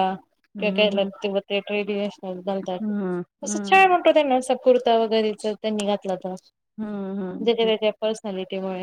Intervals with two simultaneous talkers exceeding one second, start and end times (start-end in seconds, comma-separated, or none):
none